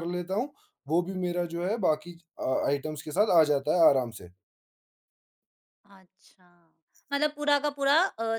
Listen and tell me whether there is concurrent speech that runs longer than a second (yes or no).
no